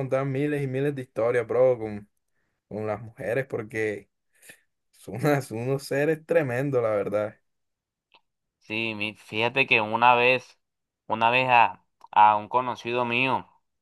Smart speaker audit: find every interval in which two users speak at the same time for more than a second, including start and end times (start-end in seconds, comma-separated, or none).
none